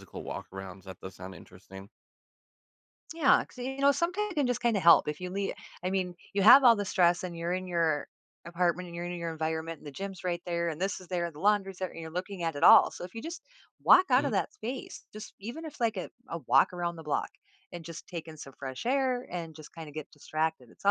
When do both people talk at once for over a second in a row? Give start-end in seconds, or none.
none